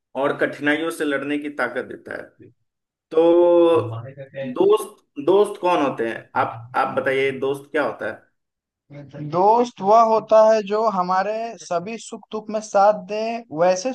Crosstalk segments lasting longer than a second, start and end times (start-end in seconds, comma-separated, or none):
none